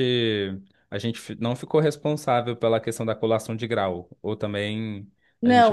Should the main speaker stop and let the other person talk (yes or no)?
yes